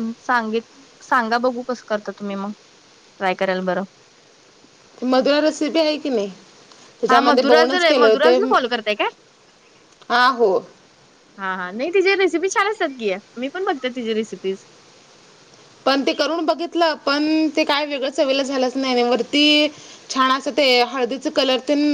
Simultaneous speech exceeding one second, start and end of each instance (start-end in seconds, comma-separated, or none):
7.1-8.4